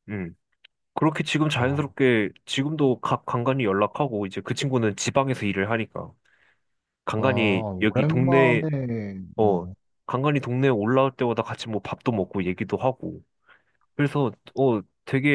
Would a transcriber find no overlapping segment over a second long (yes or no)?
no